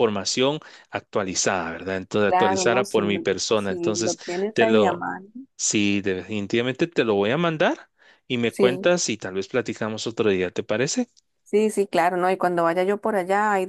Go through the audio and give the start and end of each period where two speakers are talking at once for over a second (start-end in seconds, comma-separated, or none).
2.3-5.1